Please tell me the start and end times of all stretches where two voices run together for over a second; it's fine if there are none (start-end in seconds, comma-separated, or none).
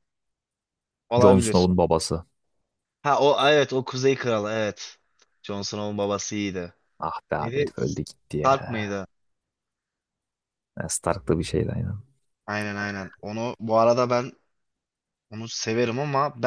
7.4-9.0